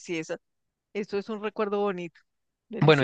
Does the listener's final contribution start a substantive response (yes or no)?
yes